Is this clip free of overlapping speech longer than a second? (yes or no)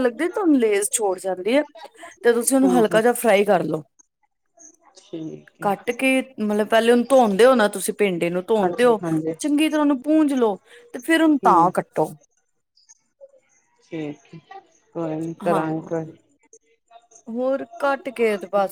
yes